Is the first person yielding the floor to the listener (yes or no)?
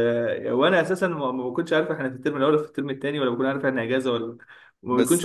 no